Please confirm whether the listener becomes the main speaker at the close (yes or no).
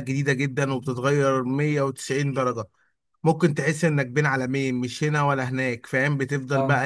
no